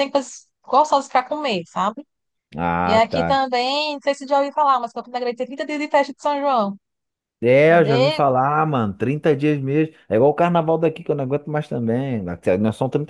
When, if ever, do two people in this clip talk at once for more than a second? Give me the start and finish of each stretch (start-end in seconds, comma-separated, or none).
none